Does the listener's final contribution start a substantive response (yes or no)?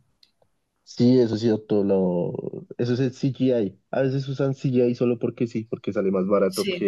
no